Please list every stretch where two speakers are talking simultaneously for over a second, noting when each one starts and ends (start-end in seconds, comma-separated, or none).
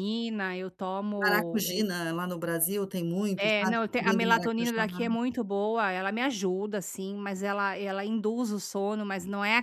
3.4-5.1